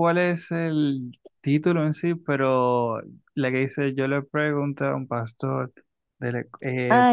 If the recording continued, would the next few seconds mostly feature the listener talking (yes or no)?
yes